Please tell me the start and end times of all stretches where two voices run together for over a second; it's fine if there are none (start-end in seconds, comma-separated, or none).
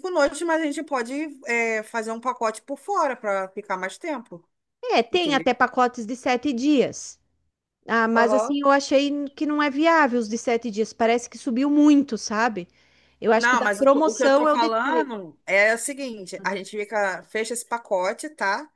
13.3-15.1